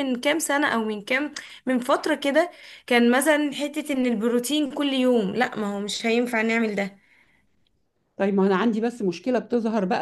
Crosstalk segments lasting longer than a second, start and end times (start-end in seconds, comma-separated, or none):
none